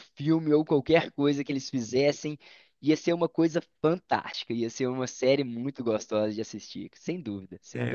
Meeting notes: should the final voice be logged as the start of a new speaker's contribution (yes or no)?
yes